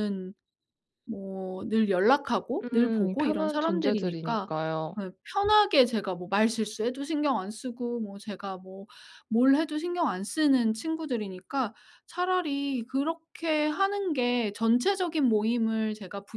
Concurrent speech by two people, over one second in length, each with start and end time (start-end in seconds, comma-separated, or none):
2.6-4.5